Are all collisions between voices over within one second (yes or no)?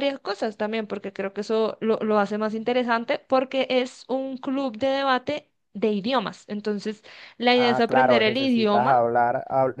no